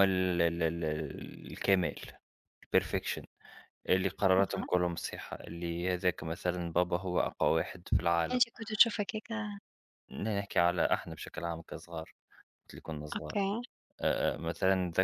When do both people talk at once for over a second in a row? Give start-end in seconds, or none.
none